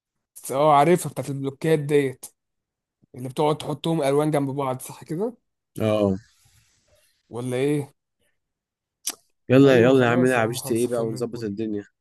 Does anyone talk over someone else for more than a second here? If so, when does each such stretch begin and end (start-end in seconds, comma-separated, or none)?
9.7-11.5